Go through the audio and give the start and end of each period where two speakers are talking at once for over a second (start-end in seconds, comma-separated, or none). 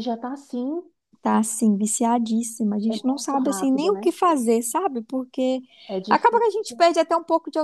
2.9-4.1